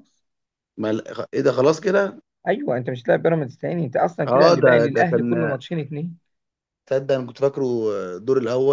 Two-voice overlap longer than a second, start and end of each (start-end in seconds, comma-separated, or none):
4.3-5.6